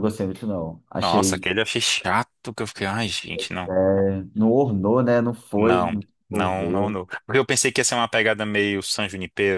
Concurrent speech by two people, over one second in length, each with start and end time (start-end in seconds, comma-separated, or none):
5.6-7.0